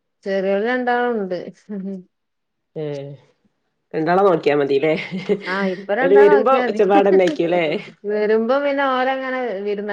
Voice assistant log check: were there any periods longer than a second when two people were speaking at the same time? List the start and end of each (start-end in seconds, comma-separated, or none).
6.0-7.6